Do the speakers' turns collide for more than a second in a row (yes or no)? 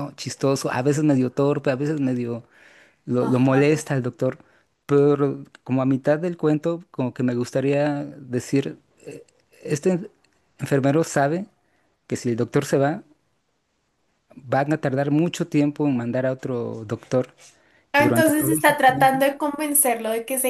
yes